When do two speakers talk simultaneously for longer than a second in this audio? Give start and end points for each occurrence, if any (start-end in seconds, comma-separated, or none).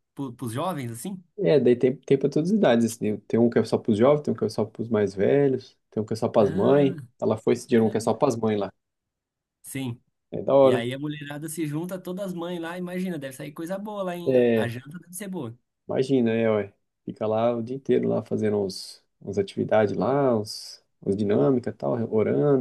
none